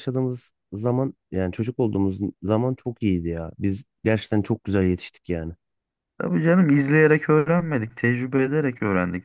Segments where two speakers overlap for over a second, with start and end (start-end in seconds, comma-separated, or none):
none